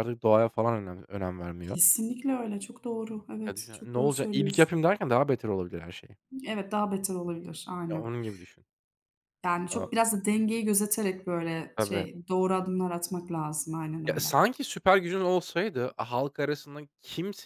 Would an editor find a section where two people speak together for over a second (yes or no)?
yes